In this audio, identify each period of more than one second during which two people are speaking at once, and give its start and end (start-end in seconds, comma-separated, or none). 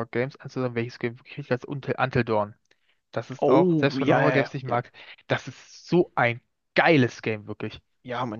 3.4-4.8